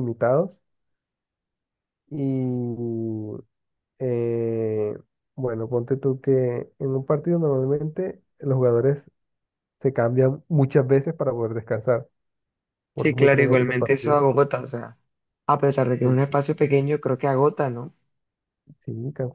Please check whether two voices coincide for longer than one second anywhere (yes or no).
yes